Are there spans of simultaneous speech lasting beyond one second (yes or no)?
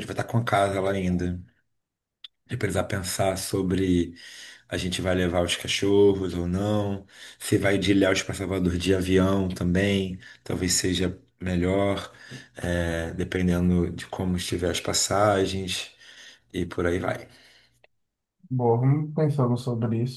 no